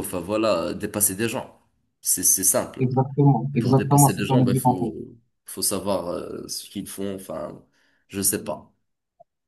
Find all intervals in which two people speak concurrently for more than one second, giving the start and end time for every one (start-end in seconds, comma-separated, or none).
3.5-4.9